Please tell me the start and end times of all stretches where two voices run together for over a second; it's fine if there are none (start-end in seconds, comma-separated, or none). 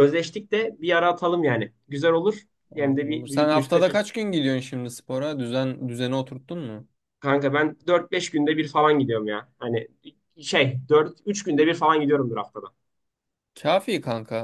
2.7-4.1